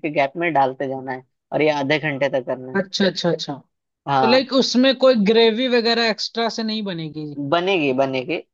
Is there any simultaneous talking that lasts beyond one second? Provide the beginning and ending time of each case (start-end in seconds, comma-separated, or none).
none